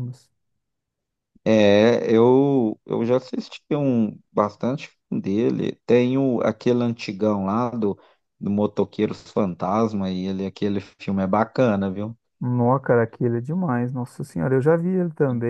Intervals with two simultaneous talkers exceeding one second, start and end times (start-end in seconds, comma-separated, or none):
none